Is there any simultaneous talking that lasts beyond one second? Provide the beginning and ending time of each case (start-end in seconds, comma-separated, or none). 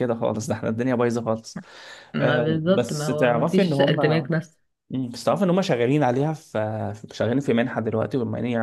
2.2-4.3